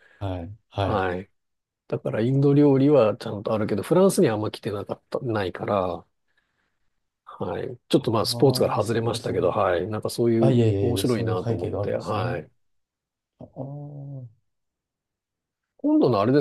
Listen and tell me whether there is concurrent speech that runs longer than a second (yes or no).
yes